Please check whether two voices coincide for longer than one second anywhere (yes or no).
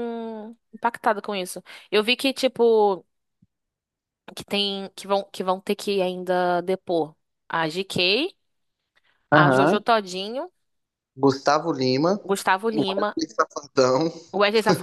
no